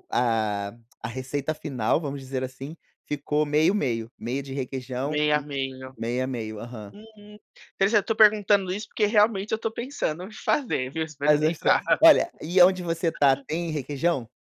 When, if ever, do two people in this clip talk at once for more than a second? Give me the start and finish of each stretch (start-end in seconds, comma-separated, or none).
none